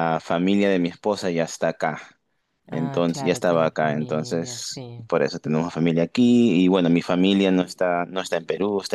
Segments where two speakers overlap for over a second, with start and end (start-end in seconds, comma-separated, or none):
2.7-5.1